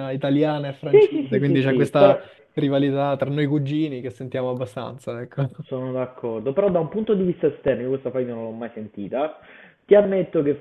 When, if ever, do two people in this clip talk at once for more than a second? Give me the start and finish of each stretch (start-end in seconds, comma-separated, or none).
0.9-2.2